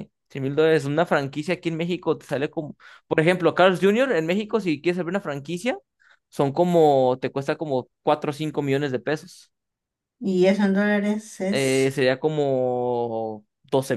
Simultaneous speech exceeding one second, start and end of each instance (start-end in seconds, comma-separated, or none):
none